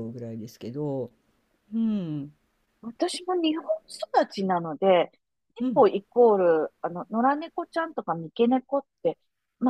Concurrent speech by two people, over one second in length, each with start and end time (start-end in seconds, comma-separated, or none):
none